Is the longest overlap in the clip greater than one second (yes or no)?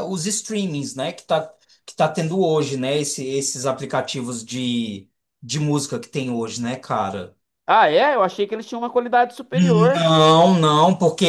no